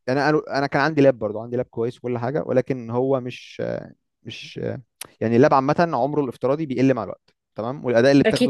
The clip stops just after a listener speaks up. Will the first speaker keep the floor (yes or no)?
yes